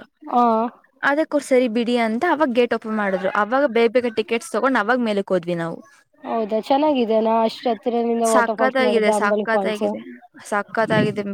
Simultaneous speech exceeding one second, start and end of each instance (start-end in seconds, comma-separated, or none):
8.3-9.8